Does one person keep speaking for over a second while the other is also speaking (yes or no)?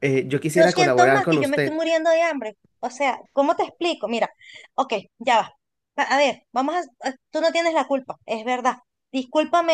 yes